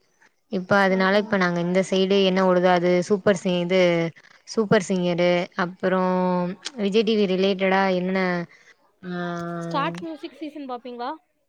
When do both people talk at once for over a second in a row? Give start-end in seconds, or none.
none